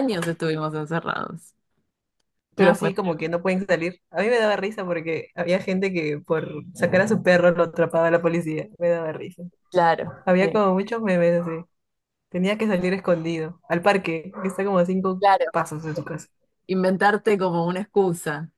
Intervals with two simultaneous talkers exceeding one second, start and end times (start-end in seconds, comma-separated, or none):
none